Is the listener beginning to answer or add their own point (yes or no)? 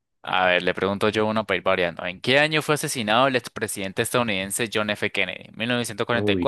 no